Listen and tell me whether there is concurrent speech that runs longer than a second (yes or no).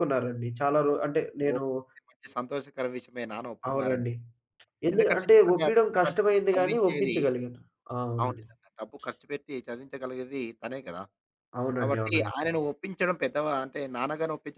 yes